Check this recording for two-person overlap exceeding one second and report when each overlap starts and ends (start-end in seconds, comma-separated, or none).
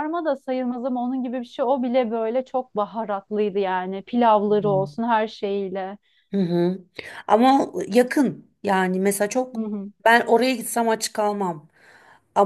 none